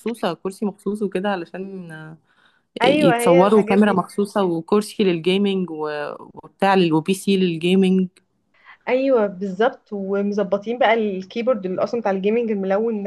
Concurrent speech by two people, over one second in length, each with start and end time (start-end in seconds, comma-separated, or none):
2.8-4.0